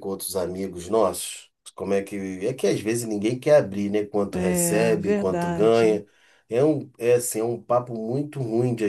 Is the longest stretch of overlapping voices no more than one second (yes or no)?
no